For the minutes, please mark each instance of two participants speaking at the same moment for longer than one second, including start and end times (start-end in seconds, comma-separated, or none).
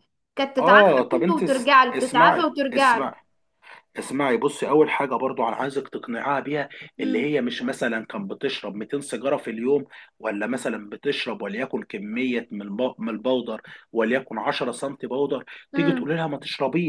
0.6-3.1